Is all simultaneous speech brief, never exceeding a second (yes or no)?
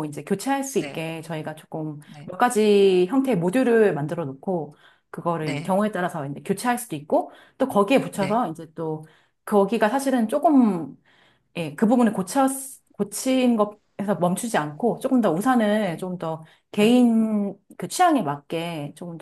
yes